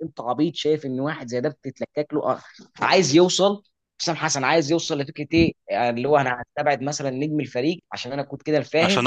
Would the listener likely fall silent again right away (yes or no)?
no